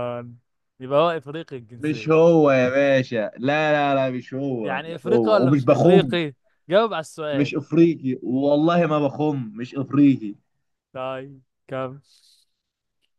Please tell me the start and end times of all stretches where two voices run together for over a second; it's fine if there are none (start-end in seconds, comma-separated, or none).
4.6-6.2